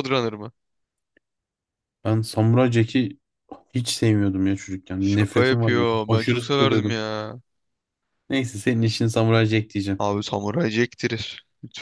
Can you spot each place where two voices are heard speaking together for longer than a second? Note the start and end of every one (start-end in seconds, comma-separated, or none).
5.0-7.0